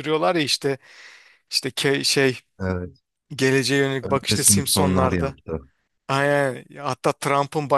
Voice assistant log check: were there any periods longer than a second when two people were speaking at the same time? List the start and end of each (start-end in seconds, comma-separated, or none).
4.0-5.4